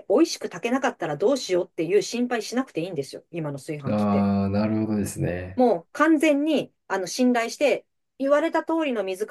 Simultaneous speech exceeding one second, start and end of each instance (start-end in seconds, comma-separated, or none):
none